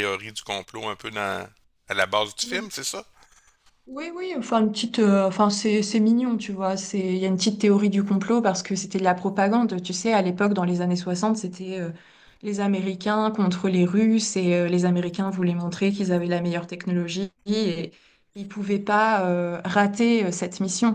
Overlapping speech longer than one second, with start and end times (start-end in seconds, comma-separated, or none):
none